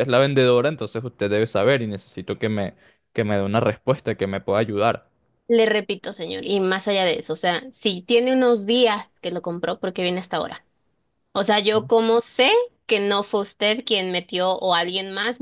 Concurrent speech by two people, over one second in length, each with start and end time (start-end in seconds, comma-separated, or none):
none